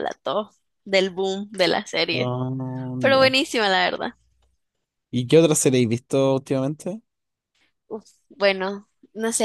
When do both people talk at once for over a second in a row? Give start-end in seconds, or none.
none